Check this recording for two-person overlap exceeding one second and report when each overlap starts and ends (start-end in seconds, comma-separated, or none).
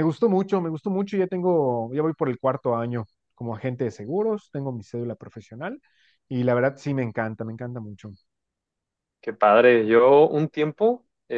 none